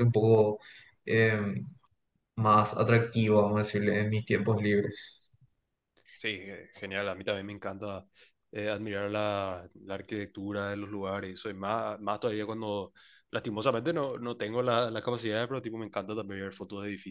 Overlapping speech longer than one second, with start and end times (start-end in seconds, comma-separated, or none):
none